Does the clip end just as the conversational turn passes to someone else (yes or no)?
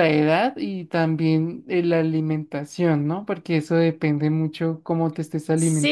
yes